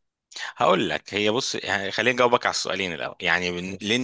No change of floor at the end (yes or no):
yes